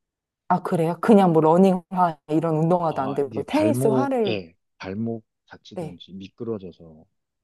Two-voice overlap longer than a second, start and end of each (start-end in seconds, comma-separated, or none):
2.9-4.4